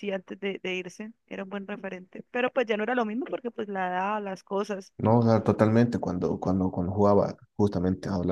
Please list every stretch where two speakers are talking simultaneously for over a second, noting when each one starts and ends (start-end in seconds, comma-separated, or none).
none